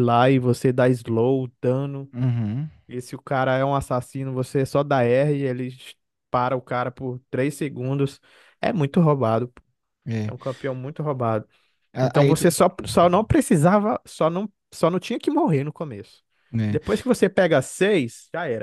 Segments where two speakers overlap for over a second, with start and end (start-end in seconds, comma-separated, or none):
none